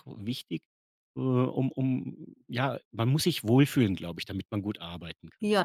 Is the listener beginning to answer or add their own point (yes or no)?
yes